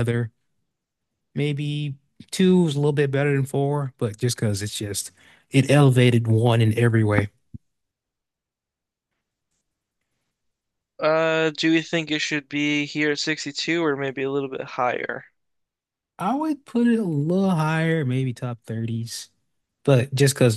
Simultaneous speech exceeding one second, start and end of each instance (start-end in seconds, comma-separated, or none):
none